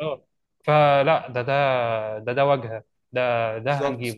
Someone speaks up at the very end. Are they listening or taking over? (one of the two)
listening